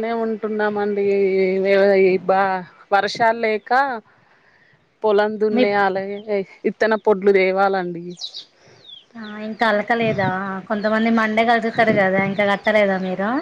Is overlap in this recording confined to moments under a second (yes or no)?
yes